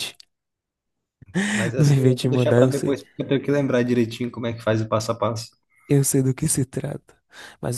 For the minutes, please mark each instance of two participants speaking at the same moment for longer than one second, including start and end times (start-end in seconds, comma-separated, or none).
1.8-3.0